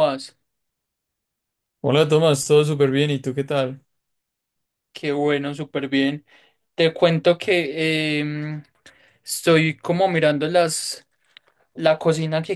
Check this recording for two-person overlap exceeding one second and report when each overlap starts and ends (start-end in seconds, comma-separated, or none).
none